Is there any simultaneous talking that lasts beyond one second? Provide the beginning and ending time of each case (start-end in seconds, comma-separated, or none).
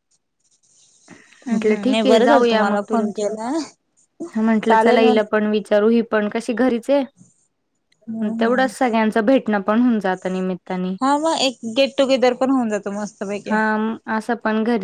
none